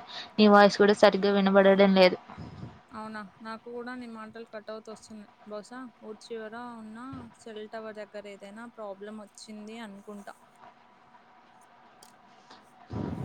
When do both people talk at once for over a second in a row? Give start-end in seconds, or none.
none